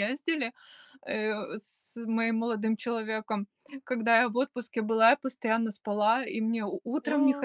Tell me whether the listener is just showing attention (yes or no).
yes